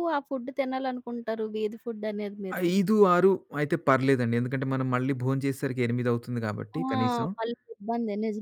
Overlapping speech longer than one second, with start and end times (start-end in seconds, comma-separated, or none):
none